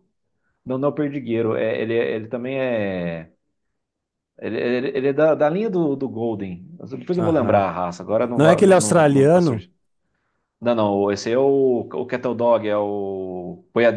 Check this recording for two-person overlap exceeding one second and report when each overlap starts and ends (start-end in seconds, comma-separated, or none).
8.3-9.6